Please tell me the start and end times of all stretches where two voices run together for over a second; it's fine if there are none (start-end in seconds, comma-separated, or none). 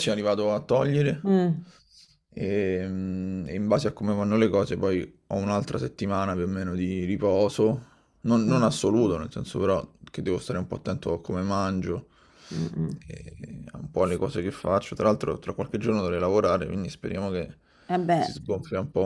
none